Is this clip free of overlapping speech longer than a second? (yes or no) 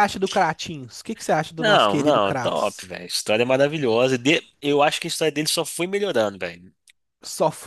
no